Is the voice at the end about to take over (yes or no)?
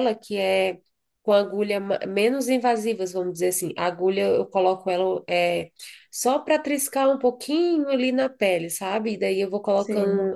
no